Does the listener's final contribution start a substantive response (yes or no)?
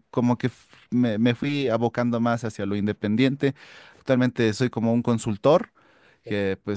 no